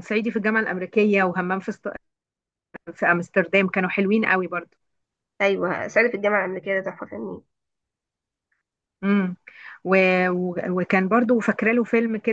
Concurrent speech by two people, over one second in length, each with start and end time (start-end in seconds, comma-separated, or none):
none